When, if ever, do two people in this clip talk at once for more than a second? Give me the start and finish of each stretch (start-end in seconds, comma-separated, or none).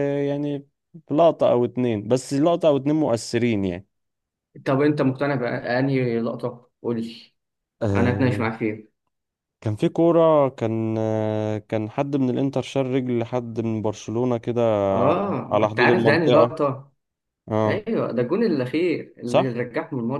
15.1-16.6